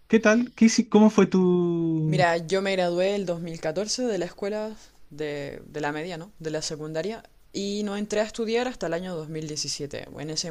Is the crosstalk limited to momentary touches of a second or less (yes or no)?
yes